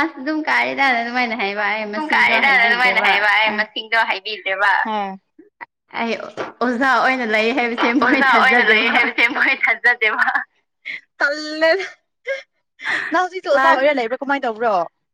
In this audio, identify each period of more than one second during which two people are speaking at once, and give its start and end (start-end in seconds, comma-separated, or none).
0.8-3.3